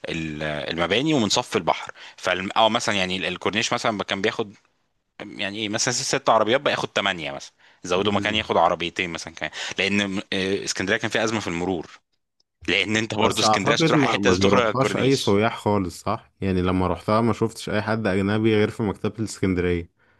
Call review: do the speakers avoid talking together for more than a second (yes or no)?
no